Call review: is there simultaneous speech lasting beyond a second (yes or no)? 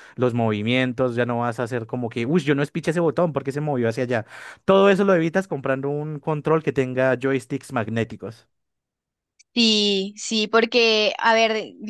no